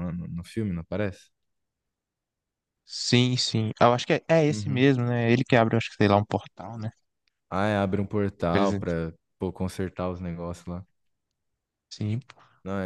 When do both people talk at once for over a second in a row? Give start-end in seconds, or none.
none